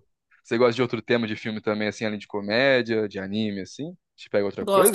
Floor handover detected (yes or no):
yes